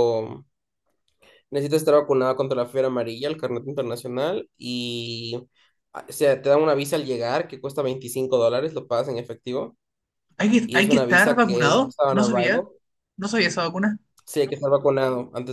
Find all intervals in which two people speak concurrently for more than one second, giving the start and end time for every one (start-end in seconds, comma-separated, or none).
10.6-12.7